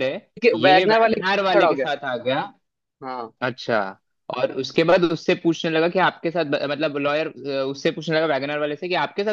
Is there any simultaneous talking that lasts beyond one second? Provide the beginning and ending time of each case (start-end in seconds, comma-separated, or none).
0.5-1.8